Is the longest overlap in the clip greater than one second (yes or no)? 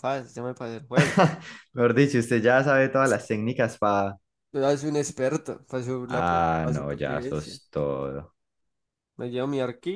yes